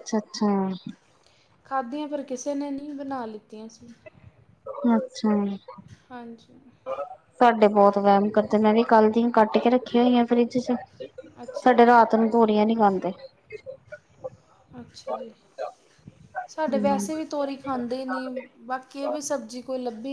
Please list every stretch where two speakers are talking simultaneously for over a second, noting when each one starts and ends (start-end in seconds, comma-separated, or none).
none